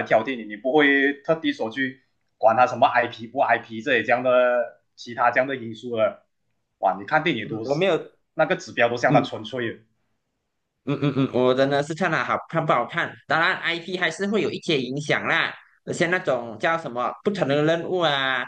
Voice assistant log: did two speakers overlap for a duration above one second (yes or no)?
no